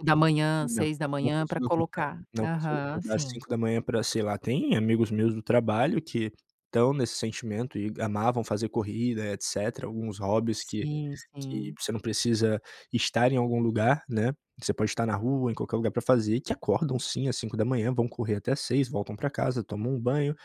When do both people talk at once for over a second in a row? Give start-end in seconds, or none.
0.6-3.4